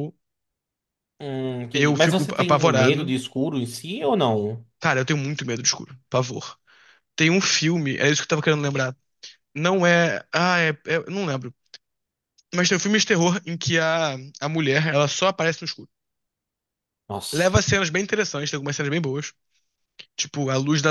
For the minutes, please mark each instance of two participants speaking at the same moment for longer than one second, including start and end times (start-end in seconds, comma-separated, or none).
1.7-3.1